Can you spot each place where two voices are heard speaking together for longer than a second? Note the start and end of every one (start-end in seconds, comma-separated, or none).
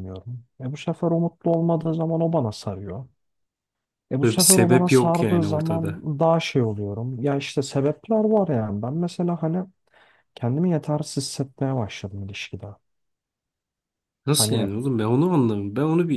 4.2-6.0